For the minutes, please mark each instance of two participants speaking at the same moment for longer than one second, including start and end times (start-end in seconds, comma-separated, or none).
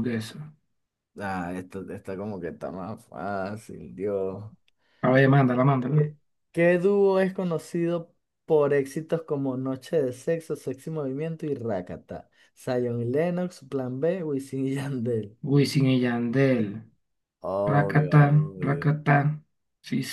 17.7-18.9